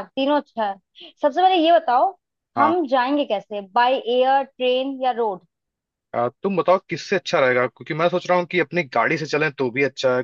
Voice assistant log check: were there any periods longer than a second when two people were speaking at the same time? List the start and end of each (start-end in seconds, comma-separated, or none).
none